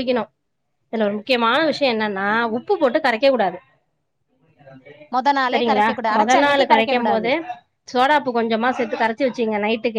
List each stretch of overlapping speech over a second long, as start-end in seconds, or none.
5.5-7.3